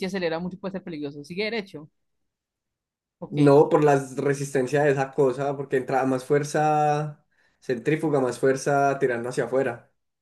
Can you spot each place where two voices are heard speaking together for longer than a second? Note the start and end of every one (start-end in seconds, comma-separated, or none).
none